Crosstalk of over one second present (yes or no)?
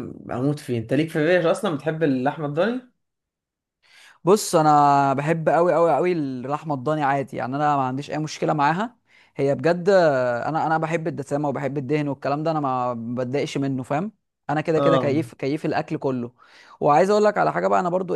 no